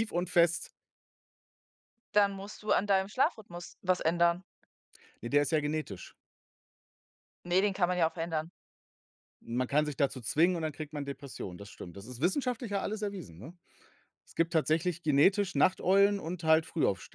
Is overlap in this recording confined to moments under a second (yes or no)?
yes